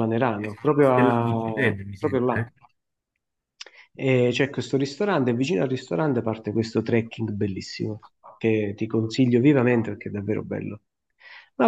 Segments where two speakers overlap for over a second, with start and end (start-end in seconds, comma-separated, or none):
0.8-2.5